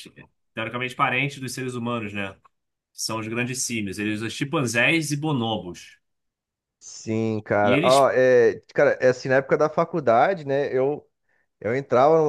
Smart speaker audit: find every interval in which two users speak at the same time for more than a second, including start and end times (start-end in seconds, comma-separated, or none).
none